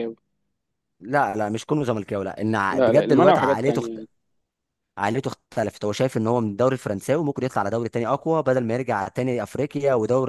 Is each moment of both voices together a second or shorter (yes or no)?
no